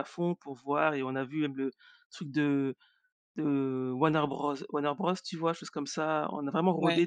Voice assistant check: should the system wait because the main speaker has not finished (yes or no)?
yes